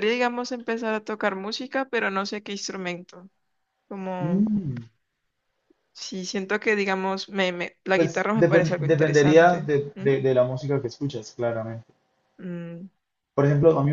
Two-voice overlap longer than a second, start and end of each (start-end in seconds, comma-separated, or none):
7.9-10.1